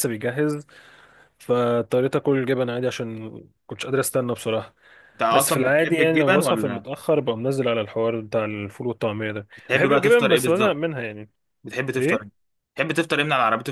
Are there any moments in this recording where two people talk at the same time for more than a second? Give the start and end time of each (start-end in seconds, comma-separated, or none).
5.3-6.9, 9.6-10.8